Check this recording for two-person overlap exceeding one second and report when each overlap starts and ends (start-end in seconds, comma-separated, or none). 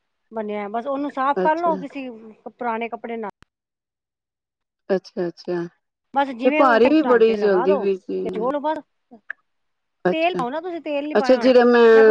6.4-7.8